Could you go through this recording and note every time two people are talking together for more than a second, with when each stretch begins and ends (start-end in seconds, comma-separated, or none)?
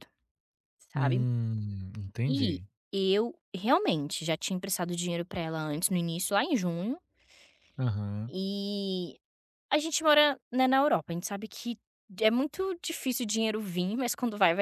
none